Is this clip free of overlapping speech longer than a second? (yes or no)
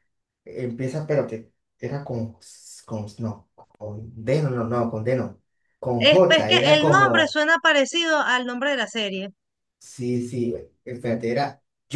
no